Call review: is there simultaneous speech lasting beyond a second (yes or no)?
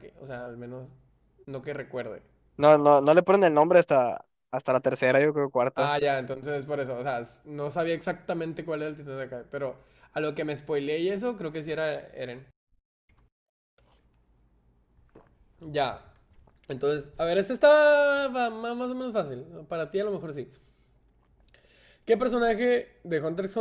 no